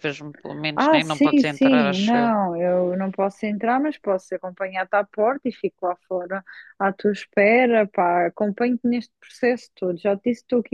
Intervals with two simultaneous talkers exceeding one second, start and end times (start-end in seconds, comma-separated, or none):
0.7-2.4